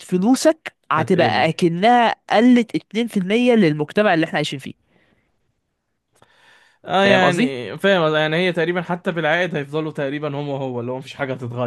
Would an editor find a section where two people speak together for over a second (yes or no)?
no